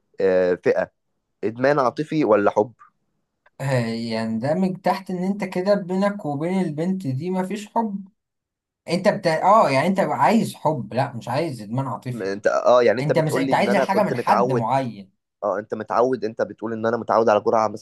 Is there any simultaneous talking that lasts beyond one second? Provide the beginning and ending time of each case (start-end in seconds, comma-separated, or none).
13.0-14.7